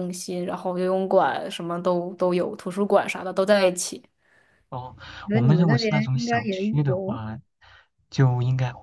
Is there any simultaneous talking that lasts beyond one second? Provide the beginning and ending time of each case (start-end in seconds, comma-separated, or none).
5.3-7.2